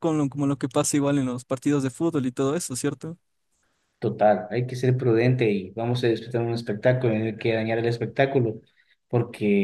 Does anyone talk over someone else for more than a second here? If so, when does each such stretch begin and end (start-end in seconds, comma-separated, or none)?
none